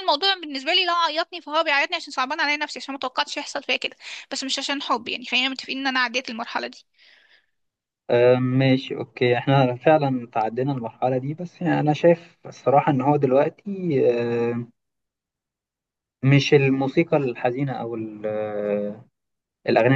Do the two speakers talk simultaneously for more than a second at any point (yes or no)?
no